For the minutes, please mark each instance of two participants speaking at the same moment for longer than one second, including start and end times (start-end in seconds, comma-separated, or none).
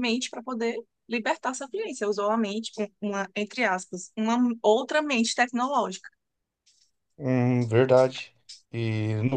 none